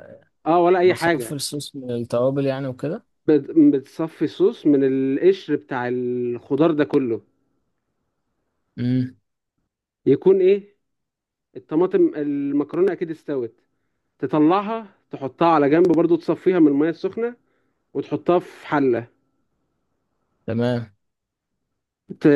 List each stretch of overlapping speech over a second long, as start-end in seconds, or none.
none